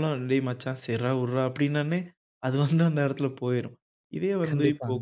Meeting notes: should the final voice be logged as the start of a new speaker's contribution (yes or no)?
no